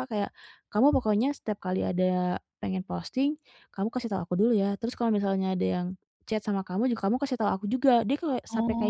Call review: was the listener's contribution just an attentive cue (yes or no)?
no